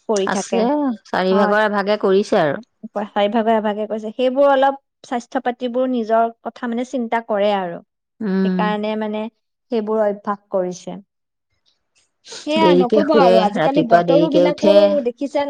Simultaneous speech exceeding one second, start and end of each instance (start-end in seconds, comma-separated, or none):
12.6-14.7